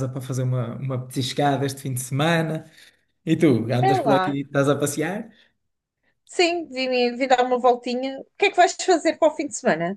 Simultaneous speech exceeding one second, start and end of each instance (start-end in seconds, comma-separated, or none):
none